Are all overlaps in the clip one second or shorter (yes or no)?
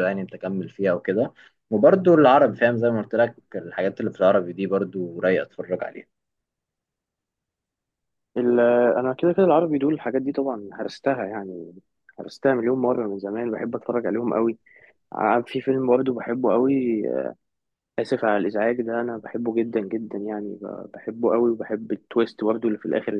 yes